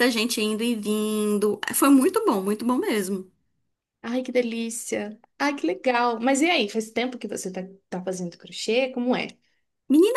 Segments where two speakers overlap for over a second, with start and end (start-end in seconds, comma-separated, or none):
none